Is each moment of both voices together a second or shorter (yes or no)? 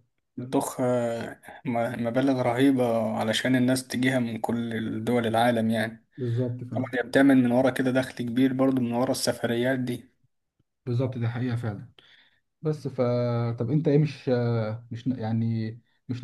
yes